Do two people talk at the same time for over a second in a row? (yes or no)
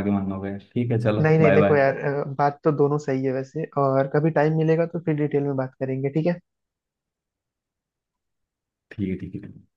no